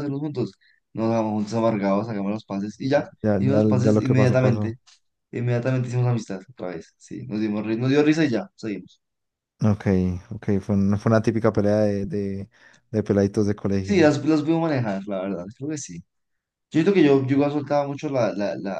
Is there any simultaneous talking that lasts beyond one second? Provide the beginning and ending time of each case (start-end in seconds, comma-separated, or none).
3.2-4.8